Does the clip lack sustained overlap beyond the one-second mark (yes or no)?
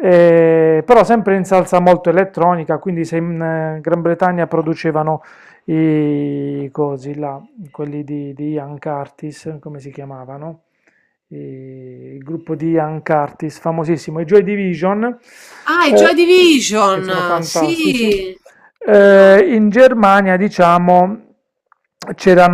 no